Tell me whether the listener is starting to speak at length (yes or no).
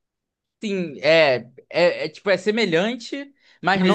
no